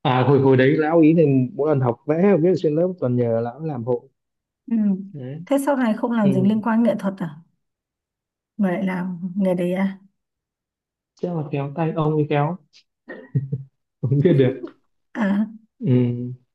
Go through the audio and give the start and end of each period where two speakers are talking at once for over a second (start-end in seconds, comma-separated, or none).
none